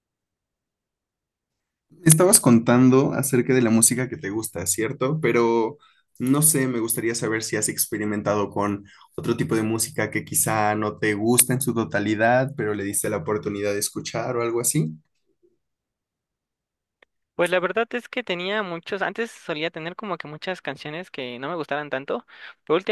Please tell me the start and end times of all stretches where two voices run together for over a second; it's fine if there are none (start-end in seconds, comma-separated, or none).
none